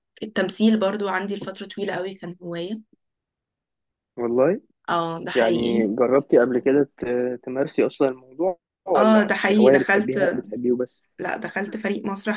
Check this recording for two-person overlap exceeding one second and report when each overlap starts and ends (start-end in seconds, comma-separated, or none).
9.0-10.2